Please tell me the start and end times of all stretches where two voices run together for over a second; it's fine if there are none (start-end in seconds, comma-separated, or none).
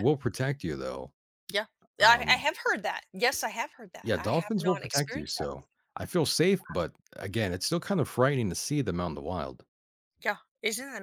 4.0-5.5